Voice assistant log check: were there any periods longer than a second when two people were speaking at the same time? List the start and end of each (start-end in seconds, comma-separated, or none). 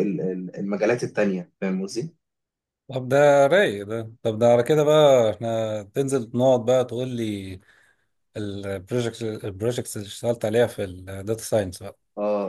none